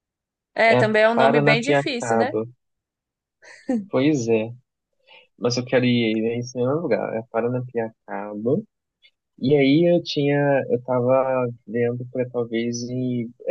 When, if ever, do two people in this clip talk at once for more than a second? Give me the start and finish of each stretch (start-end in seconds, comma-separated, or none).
0.7-2.3